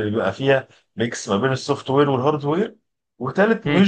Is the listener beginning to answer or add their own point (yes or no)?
no